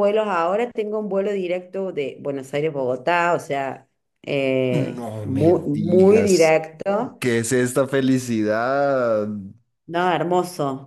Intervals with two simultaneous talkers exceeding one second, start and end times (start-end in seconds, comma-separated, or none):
4.7-6.5